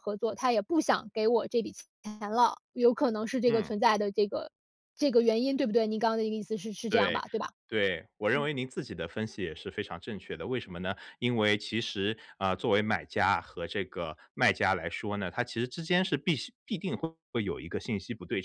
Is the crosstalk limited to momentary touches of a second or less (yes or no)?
yes